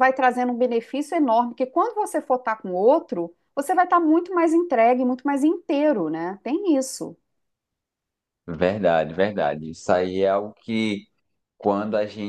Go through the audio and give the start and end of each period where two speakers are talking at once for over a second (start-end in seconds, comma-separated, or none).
none